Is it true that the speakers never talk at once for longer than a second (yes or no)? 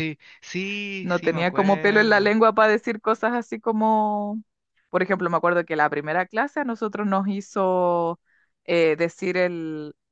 no